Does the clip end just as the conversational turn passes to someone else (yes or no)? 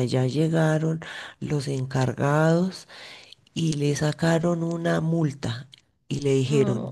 no